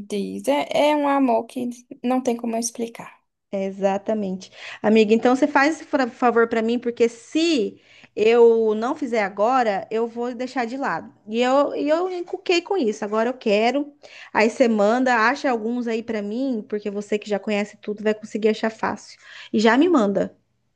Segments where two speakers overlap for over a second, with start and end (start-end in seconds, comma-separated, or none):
none